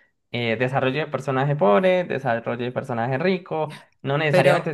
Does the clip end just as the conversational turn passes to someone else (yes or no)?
no